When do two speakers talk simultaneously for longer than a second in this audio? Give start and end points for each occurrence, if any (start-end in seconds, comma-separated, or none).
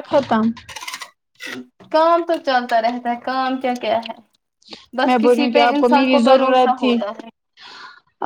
5.1-6.9